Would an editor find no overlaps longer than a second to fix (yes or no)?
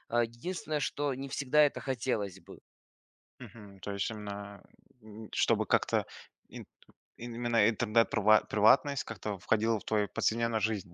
yes